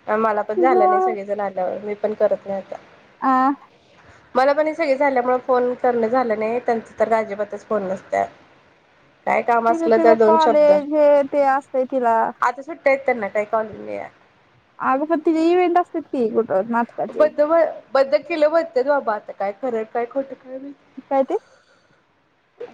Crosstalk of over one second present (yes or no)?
no